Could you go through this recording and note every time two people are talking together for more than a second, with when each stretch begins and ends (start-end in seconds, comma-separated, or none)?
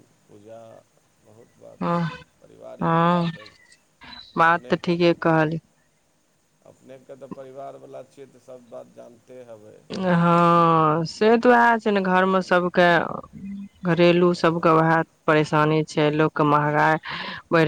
none